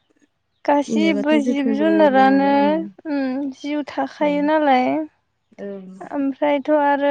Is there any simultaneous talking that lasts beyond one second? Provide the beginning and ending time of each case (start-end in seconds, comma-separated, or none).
0.8-2.5